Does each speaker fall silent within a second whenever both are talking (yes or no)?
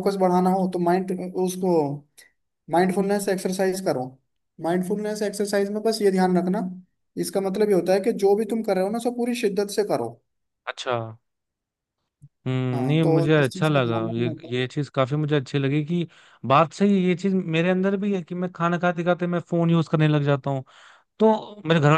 no